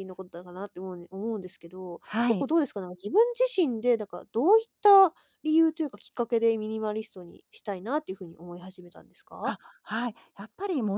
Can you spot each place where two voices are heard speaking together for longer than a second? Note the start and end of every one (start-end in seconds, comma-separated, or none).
none